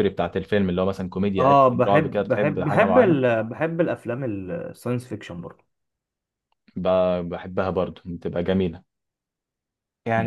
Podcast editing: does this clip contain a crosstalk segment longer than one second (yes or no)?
yes